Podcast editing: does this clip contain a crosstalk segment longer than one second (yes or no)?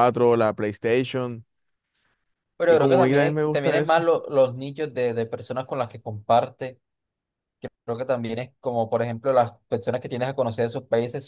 yes